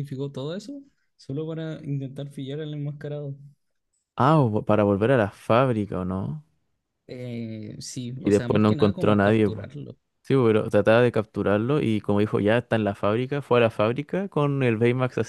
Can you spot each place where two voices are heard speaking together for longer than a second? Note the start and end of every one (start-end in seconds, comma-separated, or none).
8.2-9.7